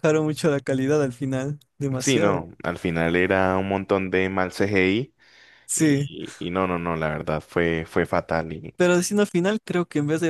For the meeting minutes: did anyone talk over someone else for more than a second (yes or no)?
no